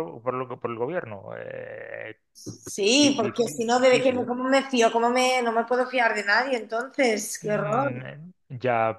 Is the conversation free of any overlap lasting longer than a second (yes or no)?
no